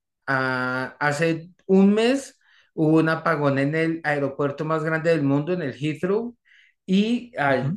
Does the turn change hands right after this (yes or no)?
no